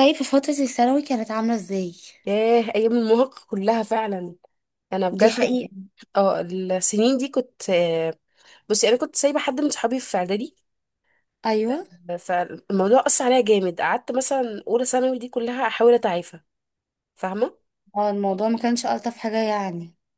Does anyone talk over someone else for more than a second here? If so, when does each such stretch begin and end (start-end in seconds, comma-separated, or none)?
none